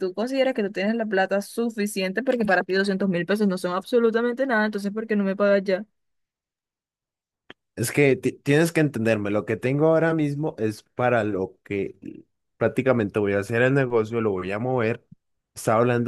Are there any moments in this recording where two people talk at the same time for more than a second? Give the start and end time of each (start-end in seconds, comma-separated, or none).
none